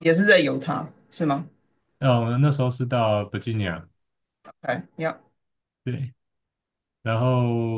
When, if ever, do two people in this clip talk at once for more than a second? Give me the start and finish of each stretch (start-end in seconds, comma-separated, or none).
none